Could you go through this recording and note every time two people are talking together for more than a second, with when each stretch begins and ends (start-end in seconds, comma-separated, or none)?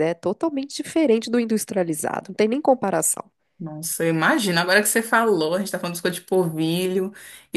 none